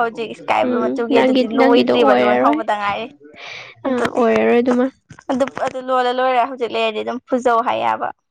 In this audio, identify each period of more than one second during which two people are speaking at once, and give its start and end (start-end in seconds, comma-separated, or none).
0.7-2.6